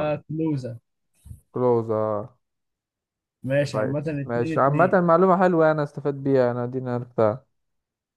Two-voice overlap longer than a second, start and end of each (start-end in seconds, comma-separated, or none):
3.7-5.0